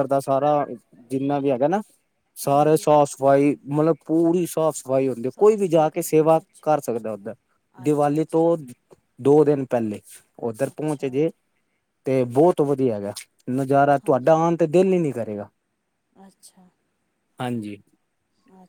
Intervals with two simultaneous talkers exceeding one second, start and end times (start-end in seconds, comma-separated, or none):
5.3-6.8